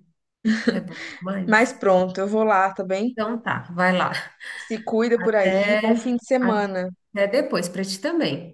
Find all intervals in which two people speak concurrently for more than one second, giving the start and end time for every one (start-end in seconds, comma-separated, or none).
5.2-6.9